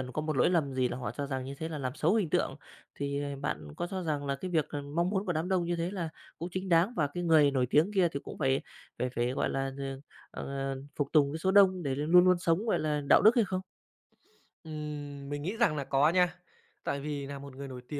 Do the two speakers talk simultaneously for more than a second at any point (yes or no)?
no